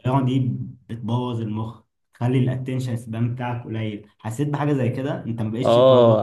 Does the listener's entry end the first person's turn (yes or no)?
yes